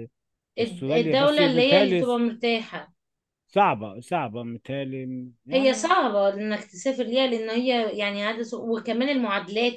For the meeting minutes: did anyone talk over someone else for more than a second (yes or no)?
yes